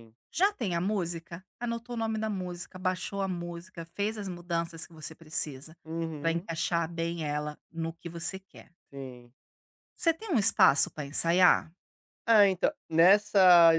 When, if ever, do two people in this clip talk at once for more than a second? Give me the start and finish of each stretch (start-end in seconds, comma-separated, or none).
none